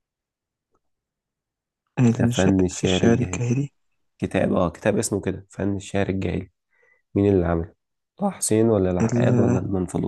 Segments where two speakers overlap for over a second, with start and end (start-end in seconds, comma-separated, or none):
2.1-3.5